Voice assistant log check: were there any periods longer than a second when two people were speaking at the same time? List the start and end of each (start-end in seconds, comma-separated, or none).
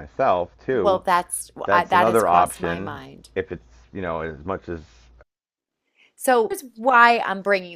1.6-3.3